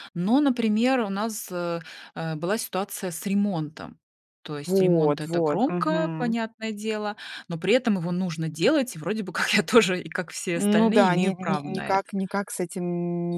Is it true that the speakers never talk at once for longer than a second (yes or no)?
no